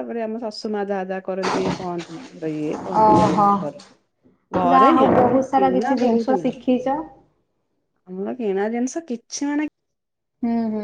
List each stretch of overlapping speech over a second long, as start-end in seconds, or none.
4.7-6.7